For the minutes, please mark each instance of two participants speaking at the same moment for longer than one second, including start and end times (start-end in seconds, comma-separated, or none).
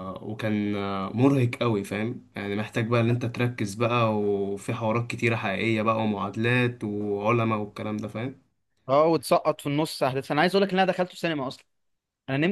none